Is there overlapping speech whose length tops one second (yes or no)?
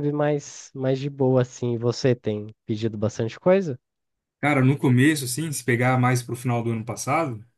no